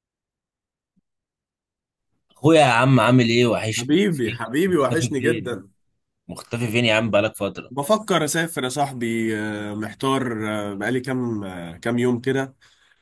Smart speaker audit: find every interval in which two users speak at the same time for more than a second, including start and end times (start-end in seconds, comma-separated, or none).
3.8-5.6